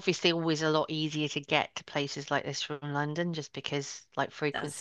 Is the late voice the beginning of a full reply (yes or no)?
no